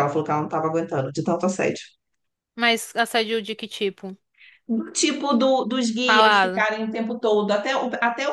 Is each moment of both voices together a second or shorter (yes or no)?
yes